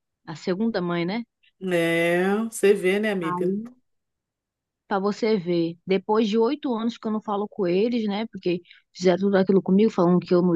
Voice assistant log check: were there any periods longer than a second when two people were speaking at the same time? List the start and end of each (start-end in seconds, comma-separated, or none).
none